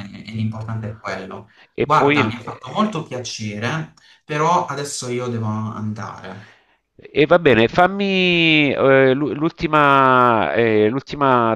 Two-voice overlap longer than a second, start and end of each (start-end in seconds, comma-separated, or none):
1.7-3.0